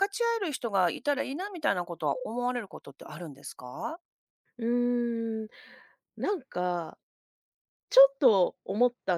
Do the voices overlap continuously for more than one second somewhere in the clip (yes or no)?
no